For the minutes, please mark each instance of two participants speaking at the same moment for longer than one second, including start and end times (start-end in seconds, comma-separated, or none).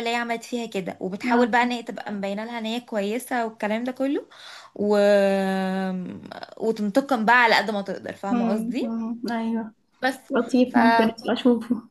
none